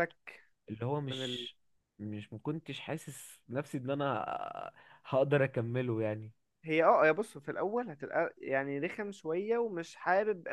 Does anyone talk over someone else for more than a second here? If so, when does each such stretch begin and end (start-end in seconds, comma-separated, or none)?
none